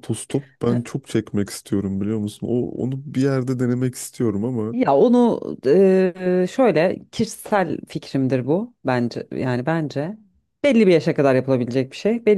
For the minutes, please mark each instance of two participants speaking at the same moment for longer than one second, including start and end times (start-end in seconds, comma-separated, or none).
none